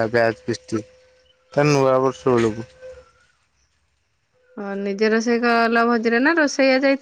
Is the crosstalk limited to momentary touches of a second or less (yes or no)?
yes